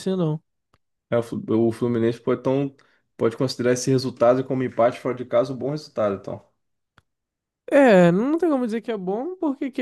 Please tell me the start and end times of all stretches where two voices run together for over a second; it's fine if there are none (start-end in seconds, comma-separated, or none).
none